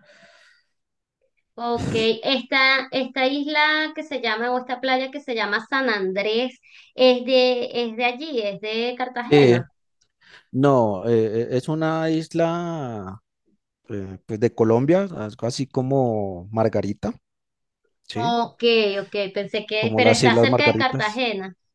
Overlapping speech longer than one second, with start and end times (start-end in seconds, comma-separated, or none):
19.8-21.2